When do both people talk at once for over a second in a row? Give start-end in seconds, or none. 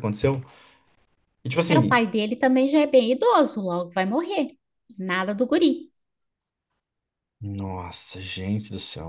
none